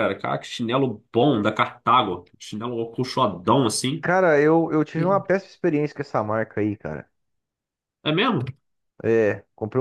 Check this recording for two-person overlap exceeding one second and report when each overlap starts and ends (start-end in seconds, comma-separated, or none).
none